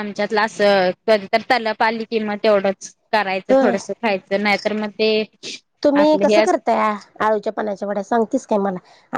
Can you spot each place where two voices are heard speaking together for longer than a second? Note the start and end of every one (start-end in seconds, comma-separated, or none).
none